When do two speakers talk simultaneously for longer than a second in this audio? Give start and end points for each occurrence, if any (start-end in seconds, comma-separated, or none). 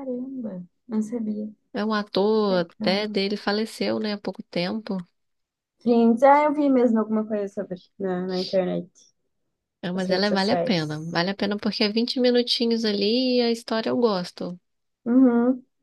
9.9-11.2